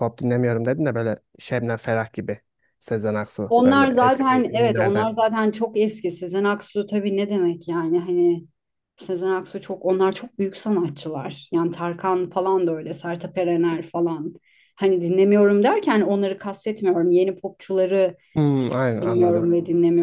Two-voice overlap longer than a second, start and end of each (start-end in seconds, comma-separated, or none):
3.5-5.1